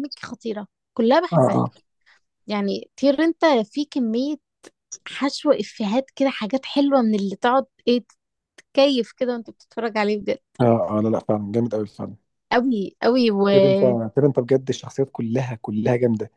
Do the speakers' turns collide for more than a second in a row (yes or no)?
no